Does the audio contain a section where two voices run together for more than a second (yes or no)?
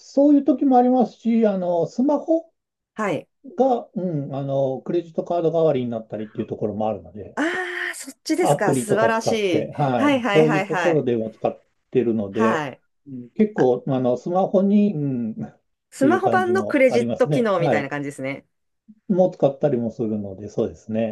yes